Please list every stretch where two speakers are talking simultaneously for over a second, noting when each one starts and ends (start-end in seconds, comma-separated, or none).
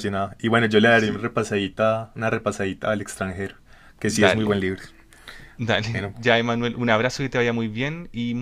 none